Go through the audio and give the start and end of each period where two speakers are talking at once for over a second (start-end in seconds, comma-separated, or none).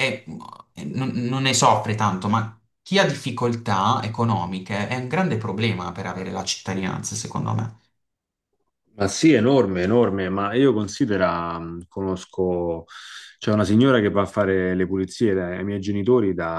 none